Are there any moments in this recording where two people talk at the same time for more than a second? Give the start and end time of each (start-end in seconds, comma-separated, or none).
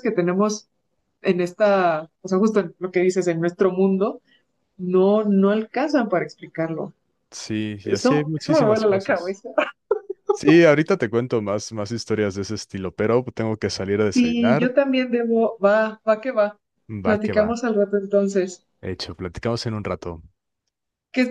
7.8-9.4